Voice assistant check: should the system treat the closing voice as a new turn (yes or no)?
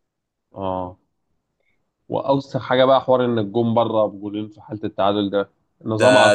yes